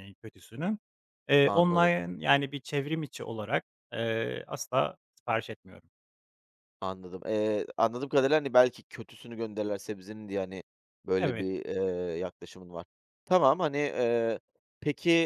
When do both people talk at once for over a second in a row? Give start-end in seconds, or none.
none